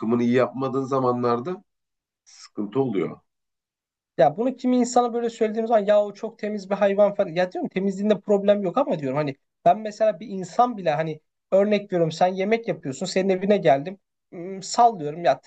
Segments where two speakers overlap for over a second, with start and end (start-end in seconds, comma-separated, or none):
none